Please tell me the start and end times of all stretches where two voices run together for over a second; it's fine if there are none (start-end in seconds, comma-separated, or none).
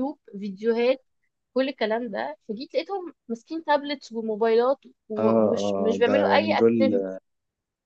5.2-6.7